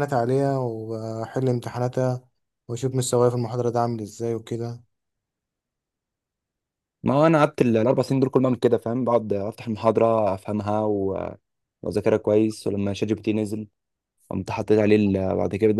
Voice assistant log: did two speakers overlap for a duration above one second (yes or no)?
no